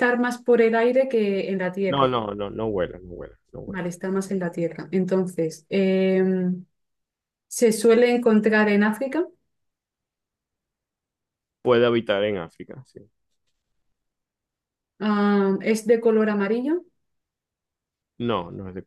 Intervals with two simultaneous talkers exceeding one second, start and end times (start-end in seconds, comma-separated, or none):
none